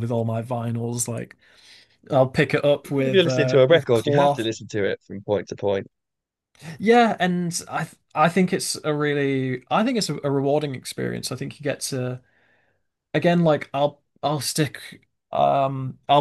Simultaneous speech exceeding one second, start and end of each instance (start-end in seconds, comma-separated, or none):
2.9-4.5